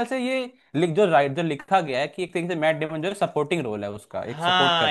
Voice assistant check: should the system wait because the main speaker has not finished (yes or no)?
no